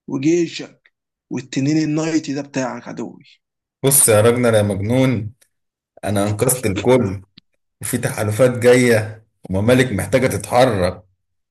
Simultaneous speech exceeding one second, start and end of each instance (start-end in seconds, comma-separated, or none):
none